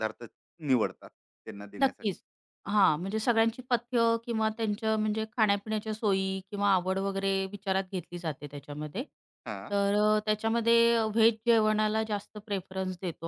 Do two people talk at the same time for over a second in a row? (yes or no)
no